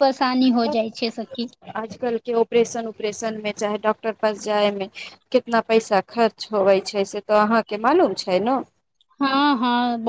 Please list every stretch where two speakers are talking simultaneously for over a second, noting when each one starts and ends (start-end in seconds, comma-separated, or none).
none